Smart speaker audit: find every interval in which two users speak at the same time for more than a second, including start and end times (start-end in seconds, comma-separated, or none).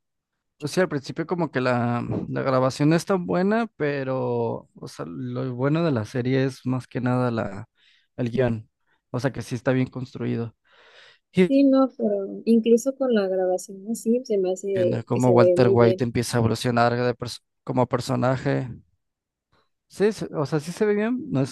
14.7-16.1